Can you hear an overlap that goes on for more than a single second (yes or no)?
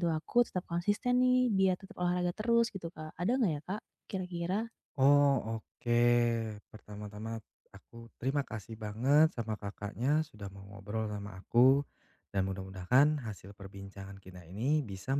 no